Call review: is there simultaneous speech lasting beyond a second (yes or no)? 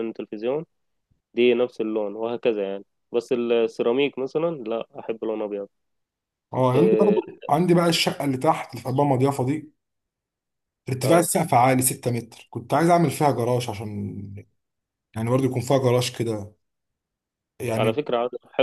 no